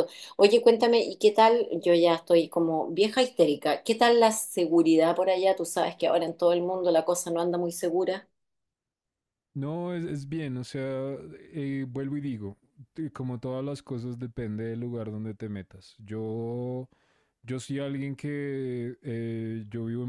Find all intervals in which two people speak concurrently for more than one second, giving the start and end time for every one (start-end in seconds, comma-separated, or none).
none